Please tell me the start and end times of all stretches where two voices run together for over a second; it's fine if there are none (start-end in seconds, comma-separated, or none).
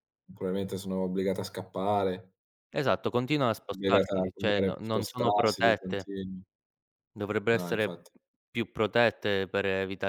3.7-6.1